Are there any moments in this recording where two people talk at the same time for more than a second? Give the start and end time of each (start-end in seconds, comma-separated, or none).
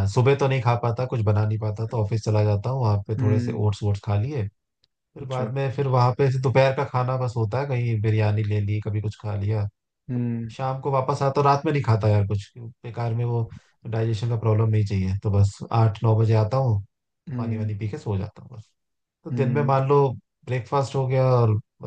none